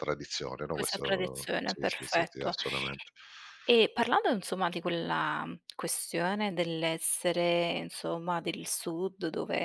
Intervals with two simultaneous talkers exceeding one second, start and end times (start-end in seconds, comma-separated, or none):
0.7-2.5